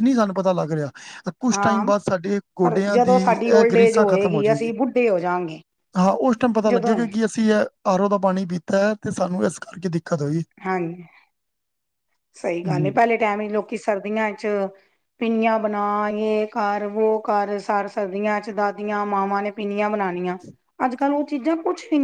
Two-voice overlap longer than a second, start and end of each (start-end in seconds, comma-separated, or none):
2.6-4.8